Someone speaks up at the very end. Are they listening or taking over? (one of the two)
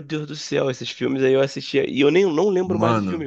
listening